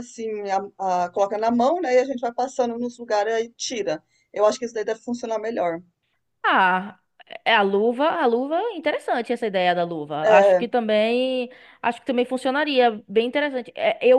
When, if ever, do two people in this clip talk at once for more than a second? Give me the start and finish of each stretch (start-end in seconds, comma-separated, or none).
none